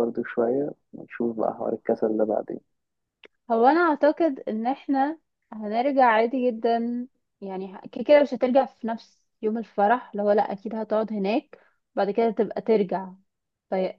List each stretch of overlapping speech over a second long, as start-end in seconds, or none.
none